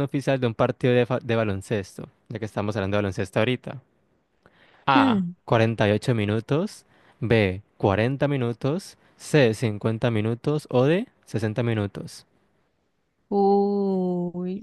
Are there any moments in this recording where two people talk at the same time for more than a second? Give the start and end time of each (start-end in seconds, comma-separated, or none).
none